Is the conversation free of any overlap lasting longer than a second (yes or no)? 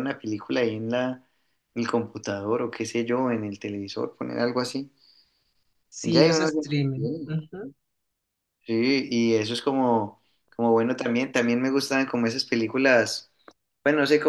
yes